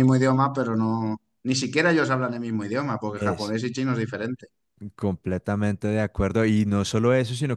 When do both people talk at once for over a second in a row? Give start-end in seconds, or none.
none